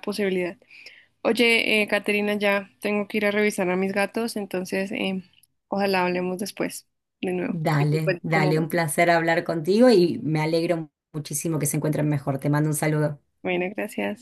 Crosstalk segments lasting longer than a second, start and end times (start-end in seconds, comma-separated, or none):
7.4-8.7